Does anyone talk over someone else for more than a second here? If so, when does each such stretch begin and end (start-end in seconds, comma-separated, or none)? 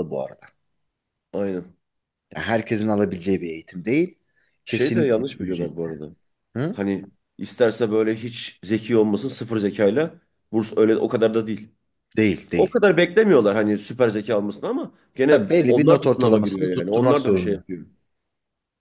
4.7-5.9, 15.3-17.6